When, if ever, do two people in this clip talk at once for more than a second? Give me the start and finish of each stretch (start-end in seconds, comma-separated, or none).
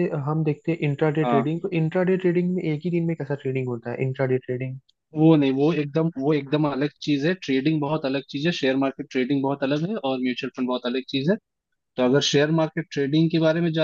none